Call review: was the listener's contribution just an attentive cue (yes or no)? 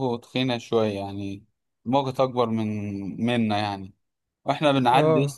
yes